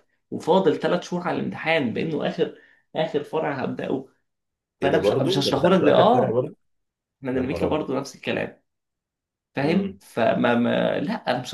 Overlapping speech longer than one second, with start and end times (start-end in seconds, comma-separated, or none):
4.8-6.5